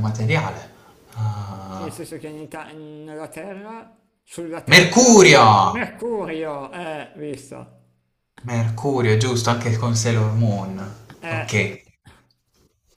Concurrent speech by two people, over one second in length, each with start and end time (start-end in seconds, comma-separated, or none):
none